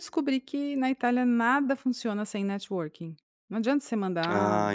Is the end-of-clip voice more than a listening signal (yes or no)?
yes